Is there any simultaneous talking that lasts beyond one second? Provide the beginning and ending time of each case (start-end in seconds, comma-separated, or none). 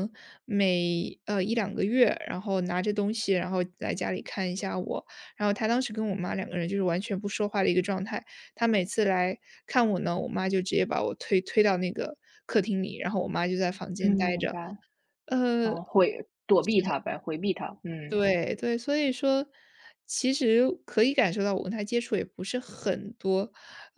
none